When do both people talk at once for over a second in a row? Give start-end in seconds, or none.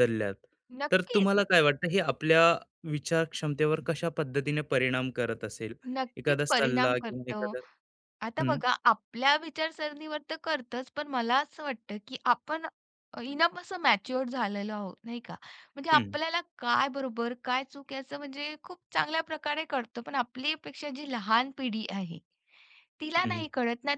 6.2-7.4